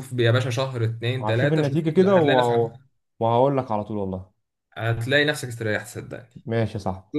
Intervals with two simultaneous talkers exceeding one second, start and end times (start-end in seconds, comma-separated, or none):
1.2-2.6